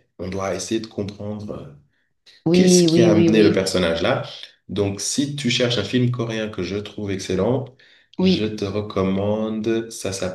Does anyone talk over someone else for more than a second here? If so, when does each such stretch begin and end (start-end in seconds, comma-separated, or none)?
2.5-3.7